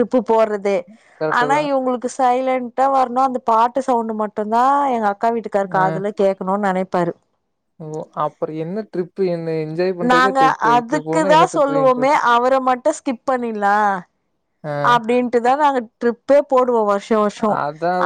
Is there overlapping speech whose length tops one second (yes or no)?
yes